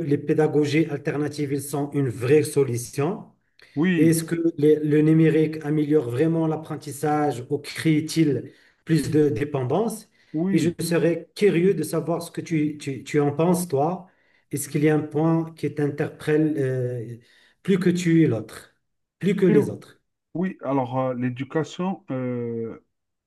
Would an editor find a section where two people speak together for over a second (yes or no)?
no